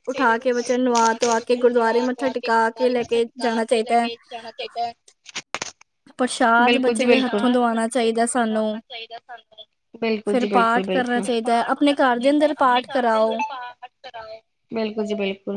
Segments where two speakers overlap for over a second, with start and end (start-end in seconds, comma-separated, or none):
6.6-8.8, 10.3-13.3